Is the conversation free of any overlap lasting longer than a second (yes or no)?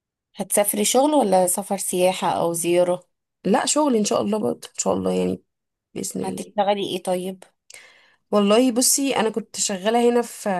yes